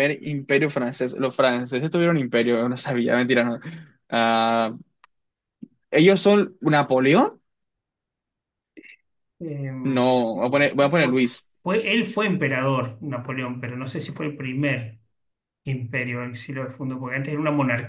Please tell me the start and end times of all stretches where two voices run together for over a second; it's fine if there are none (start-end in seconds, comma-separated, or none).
none